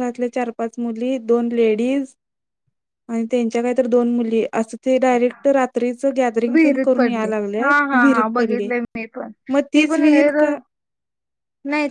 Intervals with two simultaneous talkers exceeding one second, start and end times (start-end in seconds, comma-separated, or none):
6.5-8.7